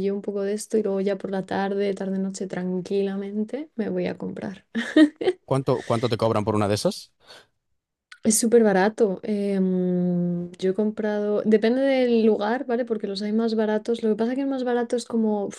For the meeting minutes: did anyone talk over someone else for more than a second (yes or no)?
no